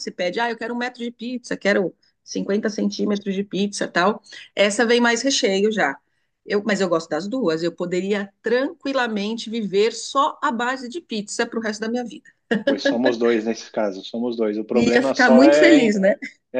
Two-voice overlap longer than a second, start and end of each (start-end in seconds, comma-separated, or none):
14.7-16.0